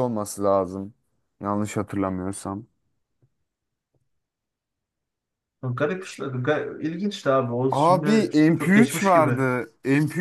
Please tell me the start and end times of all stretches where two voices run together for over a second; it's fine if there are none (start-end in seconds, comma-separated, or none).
7.7-9.5